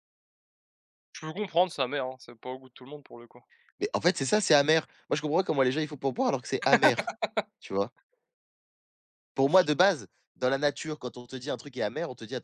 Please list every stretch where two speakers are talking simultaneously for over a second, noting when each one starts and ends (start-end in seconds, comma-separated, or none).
none